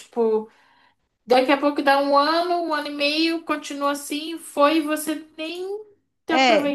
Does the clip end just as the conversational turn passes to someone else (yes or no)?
yes